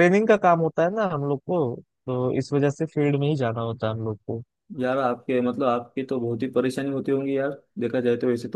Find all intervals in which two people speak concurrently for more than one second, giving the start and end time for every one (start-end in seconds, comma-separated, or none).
none